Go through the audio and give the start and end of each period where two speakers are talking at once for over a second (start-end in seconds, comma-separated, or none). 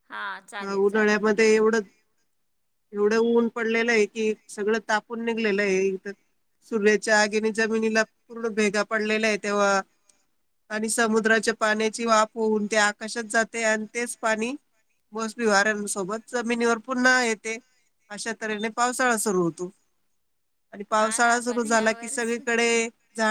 21.0-22.4